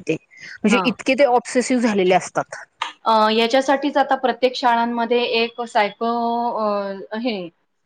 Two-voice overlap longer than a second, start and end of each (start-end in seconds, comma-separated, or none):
none